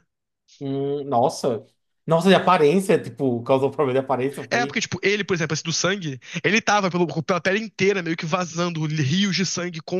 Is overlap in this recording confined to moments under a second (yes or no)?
yes